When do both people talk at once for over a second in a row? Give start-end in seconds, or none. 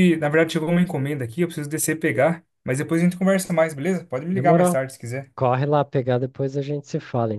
none